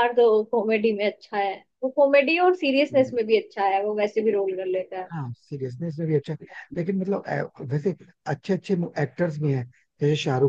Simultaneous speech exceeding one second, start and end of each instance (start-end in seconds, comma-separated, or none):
none